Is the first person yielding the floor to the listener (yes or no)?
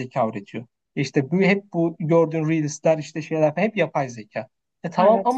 no